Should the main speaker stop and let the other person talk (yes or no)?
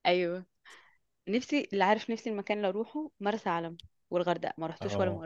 yes